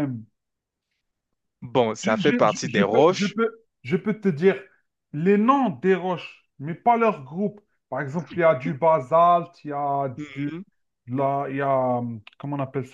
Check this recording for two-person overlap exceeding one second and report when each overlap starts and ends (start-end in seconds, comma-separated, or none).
2.0-3.4